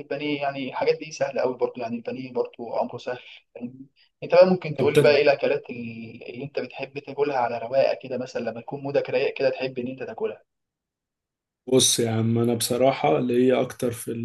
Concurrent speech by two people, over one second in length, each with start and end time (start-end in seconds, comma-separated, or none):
none